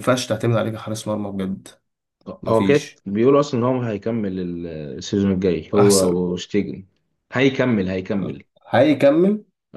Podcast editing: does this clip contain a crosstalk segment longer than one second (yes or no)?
no